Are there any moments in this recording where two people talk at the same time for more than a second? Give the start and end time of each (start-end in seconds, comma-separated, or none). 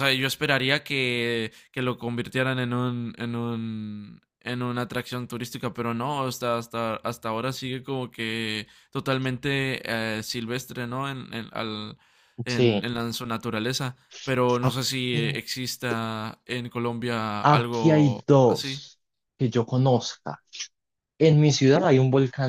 17.4-18.8